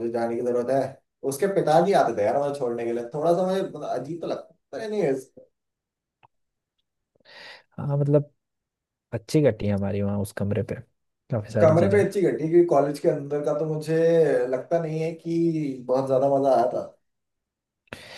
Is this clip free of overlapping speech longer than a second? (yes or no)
yes